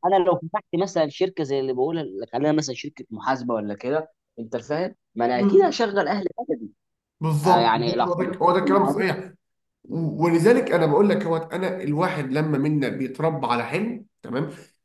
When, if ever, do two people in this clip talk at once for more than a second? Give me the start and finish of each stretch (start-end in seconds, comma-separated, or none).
7.4-9.1